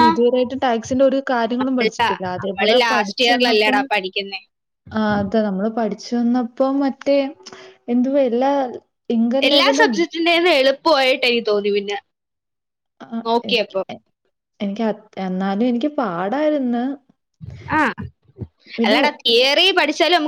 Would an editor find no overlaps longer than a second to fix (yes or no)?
no